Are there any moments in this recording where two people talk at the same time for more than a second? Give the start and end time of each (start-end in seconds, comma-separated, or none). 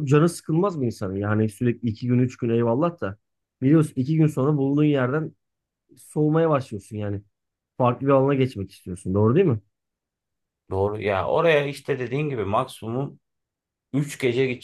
none